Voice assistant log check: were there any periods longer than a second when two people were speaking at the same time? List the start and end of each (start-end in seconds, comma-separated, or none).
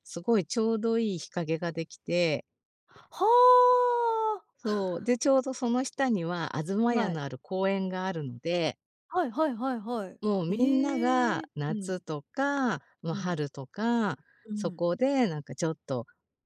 10.2-11.9